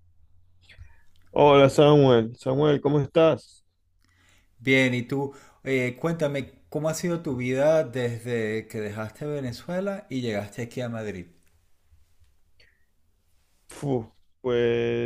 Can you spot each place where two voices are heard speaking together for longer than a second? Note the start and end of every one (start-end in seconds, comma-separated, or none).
none